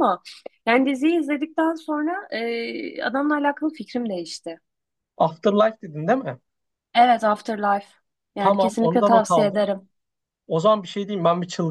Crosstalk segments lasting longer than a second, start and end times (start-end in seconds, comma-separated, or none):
8.4-9.6